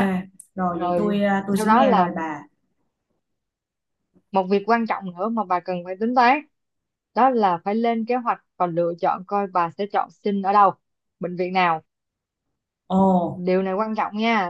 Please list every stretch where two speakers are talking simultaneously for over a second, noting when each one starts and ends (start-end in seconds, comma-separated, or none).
0.7-2.1